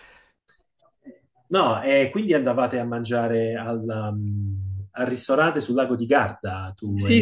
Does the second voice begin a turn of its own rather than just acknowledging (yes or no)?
yes